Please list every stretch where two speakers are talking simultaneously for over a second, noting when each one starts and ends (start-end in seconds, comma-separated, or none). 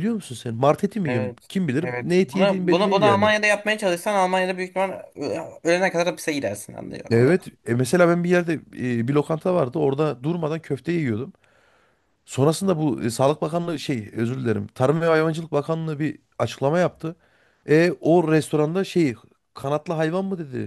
1.1-3.3